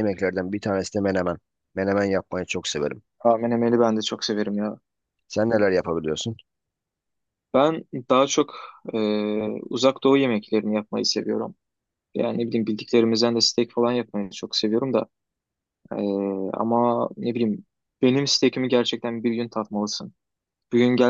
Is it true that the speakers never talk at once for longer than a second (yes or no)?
yes